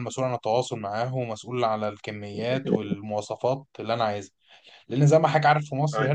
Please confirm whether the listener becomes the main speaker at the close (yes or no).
no